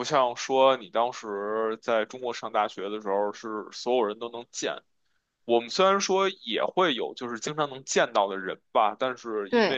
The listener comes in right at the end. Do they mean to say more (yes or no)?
no